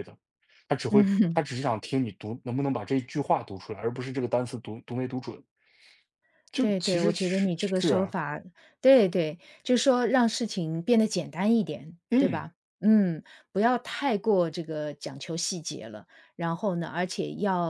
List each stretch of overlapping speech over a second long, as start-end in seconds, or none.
6.6-8.1